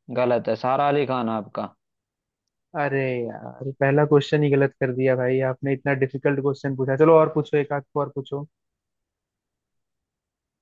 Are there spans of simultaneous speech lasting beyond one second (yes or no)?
no